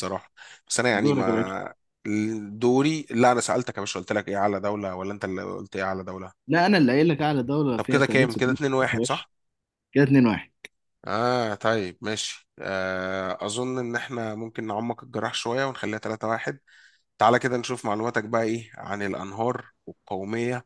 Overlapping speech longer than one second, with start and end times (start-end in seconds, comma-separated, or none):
7.8-9.3